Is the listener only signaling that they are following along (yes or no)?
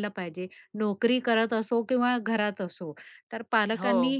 yes